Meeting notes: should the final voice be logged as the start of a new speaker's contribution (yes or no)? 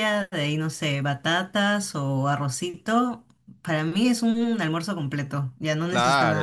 yes